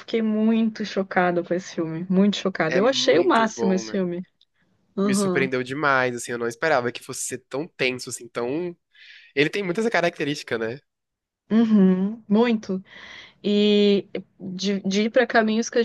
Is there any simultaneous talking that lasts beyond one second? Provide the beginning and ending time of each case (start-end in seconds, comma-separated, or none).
2.7-4.0